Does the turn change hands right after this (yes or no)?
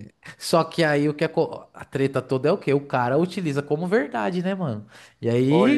no